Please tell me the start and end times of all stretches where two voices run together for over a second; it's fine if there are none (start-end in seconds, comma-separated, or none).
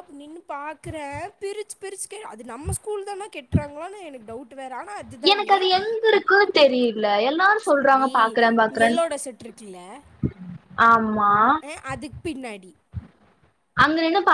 none